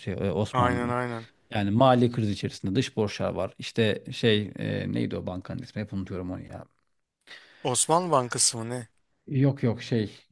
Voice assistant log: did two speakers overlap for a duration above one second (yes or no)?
no